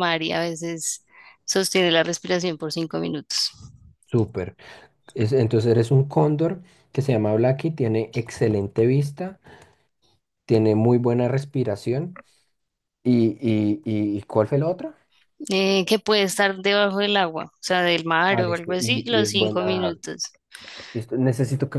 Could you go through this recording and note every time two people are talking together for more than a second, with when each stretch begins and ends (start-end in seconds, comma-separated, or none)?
18.3-19.9